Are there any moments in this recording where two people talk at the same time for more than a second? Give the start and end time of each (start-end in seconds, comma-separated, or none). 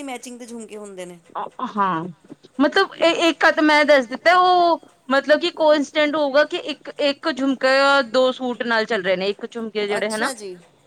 none